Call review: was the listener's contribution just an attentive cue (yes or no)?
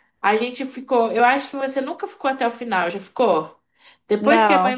yes